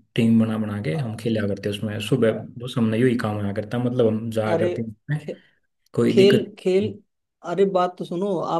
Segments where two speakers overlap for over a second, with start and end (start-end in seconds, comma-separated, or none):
none